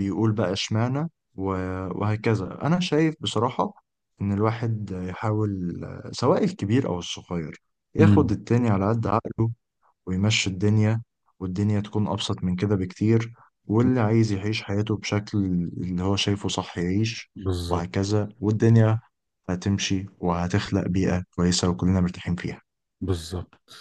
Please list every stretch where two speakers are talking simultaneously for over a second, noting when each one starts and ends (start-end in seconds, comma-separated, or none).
none